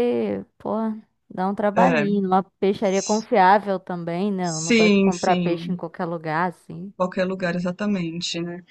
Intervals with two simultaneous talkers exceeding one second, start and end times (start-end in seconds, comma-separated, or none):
4.4-5.8